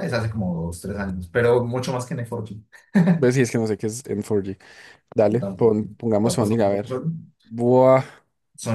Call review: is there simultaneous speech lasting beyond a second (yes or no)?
yes